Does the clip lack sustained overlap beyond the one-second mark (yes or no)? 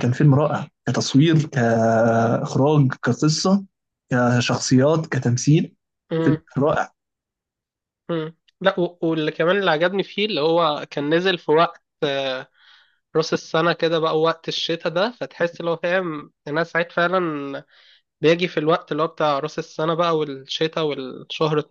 yes